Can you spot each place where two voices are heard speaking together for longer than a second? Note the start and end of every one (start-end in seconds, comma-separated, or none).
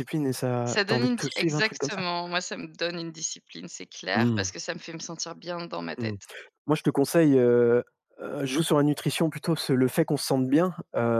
0.7-2.0